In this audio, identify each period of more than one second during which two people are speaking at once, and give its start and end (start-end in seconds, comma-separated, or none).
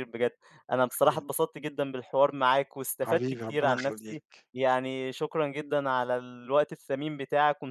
3.0-4.5